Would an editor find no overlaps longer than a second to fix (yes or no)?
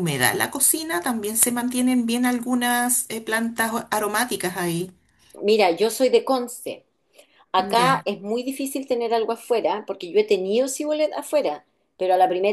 yes